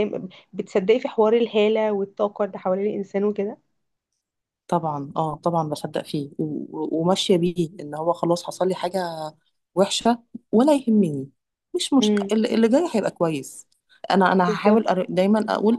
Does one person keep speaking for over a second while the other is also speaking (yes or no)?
no